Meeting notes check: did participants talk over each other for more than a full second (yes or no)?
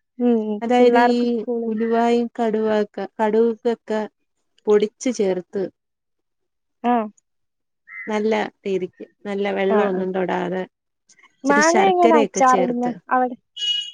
yes